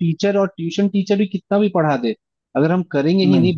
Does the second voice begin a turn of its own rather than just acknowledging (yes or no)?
no